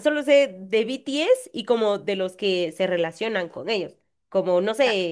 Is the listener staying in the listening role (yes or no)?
yes